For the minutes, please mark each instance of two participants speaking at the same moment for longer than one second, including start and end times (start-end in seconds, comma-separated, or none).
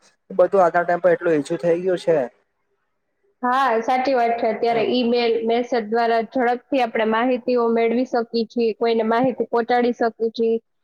none